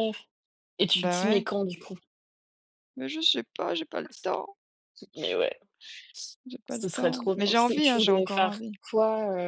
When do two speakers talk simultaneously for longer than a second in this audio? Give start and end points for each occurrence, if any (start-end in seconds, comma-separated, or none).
6.7-8.7